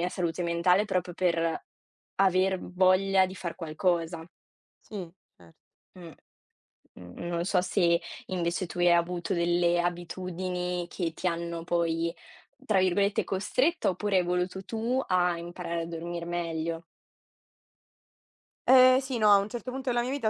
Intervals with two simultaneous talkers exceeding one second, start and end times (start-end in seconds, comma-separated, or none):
none